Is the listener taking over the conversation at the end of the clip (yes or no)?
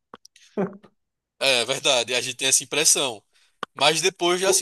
no